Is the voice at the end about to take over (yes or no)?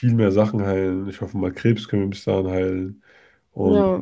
no